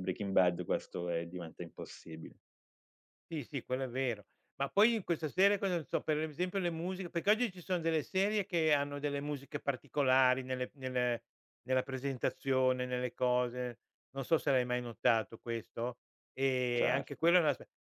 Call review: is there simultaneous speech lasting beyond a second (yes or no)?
no